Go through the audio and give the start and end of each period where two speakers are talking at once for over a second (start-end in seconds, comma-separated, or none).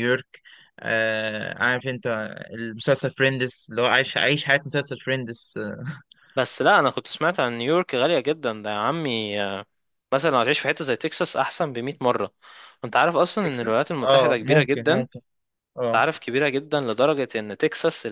13.4-15.2